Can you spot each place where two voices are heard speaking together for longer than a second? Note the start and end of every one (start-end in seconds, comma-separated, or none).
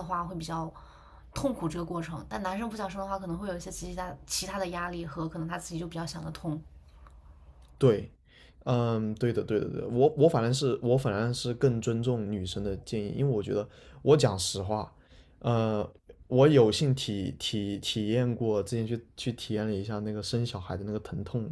none